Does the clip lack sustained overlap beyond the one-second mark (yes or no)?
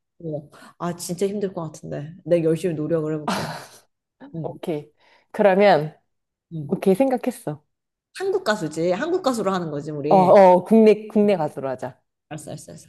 yes